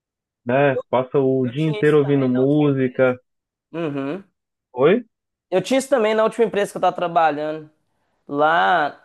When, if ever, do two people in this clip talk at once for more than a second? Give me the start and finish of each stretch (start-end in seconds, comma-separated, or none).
1.4-3.1